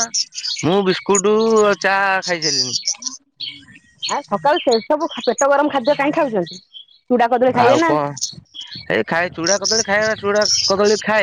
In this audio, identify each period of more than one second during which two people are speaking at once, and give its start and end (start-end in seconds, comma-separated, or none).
none